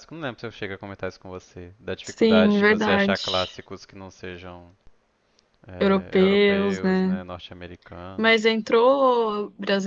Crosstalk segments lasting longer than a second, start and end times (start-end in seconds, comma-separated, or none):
2.0-3.5, 5.8-7.2